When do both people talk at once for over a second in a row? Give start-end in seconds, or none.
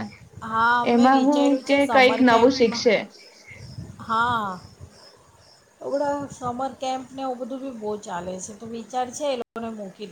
0.9-2.9